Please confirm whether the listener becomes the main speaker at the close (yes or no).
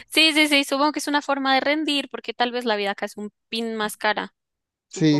yes